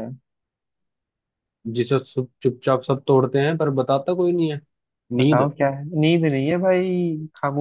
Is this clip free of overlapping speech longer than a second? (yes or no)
yes